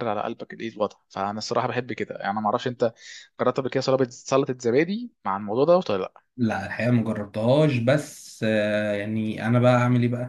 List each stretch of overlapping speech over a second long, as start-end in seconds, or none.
none